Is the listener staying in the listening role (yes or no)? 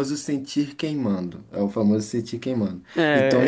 no